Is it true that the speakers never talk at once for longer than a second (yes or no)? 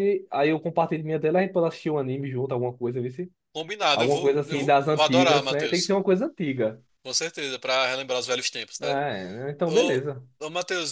no